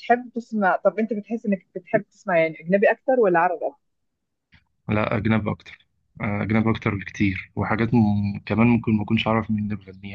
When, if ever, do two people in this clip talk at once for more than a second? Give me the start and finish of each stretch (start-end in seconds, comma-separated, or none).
none